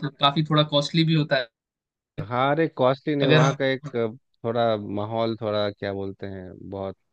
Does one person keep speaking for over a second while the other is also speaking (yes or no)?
no